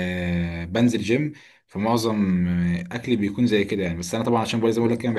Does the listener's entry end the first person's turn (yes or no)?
no